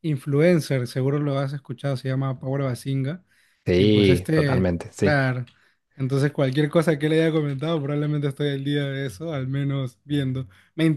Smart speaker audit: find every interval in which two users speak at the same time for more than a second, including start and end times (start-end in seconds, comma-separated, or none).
3.7-5.2